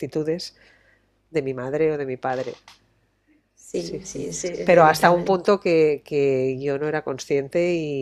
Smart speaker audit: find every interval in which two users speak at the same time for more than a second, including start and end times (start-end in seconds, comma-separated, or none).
3.8-5.4